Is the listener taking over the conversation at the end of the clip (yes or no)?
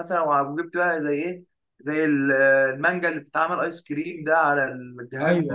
yes